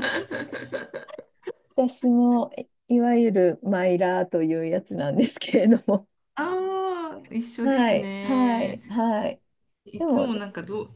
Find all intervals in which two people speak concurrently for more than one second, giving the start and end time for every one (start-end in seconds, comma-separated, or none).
7.6-8.8